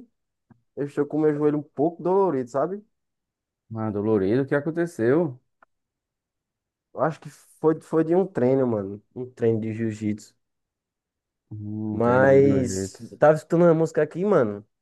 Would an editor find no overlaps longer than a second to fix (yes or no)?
no